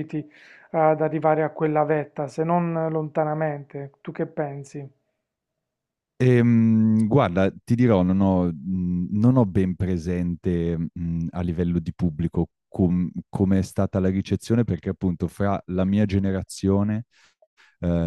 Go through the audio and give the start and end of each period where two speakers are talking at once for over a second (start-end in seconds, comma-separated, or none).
none